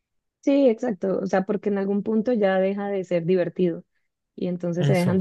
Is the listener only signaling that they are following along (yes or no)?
yes